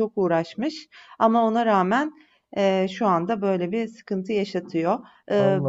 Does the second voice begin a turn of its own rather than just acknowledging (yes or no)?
yes